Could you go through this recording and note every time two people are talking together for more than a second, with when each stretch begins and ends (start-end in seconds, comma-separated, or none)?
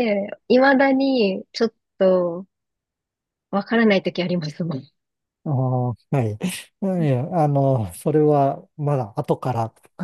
none